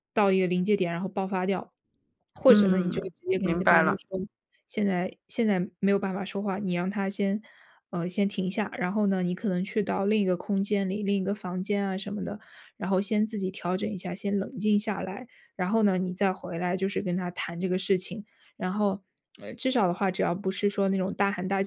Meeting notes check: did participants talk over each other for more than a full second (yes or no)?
yes